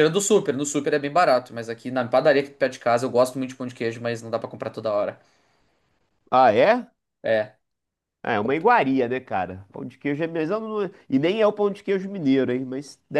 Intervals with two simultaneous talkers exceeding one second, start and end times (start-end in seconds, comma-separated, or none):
none